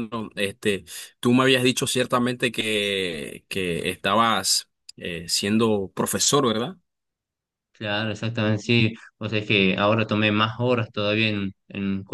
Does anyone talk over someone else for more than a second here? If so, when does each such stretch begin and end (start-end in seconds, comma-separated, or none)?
none